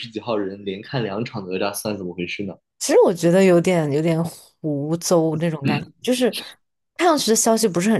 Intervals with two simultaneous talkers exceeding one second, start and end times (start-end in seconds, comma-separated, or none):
none